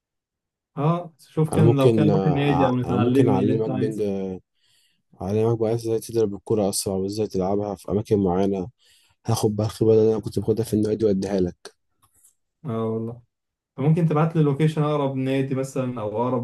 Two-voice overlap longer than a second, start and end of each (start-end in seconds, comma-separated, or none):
1.5-4.0